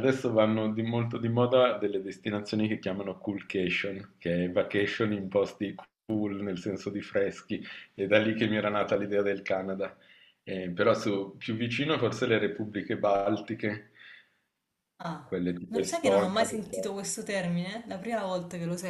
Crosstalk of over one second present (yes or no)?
yes